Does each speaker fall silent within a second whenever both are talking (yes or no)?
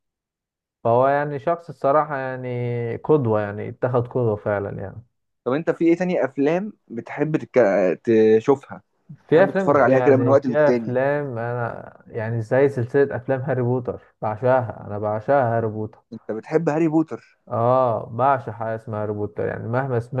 no